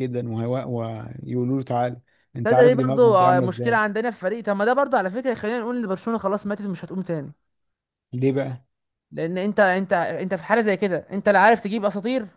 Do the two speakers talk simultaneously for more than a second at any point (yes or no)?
yes